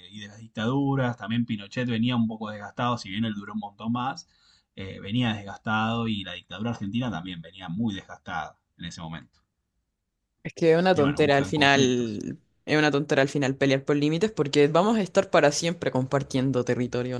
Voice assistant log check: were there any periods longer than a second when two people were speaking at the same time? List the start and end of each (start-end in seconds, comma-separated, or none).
10.9-12.2